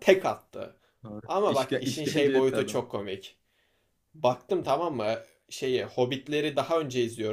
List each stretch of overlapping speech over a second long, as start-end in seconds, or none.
1.2-2.9